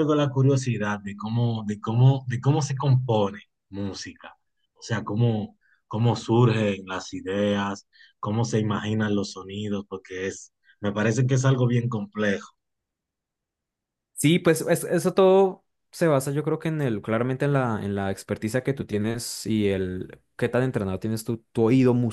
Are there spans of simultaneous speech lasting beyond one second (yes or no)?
no